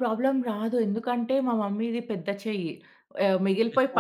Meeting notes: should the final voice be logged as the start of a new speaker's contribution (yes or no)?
no